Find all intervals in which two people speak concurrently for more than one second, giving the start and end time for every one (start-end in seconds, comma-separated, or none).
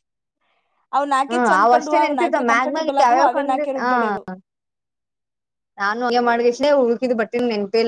1.3-3.9